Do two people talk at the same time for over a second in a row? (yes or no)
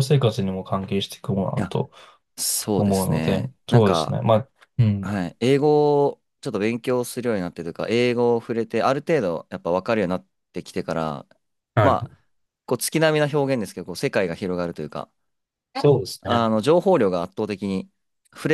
yes